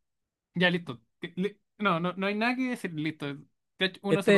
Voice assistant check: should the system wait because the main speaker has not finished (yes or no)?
no